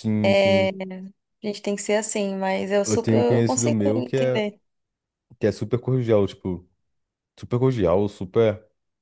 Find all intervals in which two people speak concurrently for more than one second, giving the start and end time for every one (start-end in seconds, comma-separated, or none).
2.8-4.4